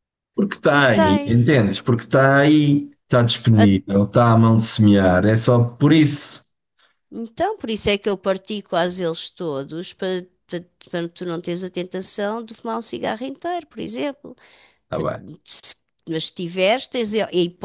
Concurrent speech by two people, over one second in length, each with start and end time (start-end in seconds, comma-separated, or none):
none